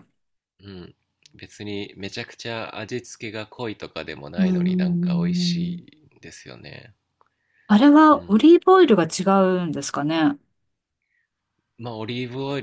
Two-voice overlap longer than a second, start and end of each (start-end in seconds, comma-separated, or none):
4.4-5.7